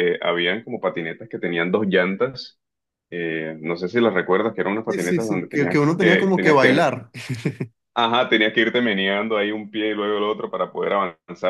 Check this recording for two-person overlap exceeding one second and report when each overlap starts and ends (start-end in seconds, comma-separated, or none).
4.9-6.9